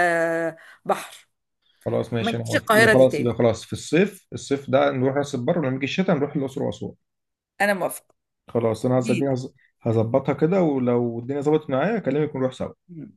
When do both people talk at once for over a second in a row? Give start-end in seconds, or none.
2.2-3.4